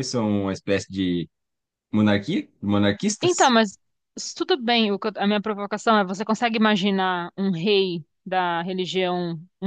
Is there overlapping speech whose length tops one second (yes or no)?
no